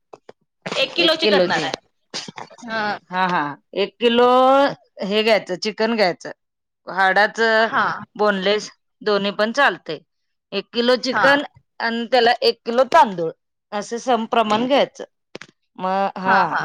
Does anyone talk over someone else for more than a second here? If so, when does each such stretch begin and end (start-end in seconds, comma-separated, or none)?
none